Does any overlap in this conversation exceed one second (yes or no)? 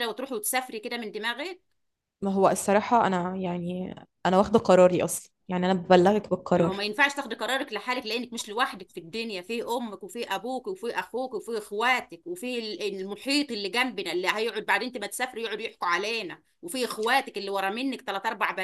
no